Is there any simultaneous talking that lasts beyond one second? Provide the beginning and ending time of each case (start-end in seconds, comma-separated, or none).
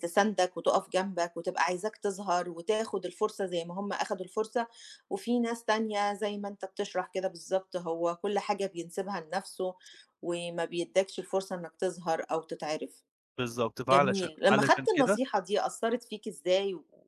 13.9-15.2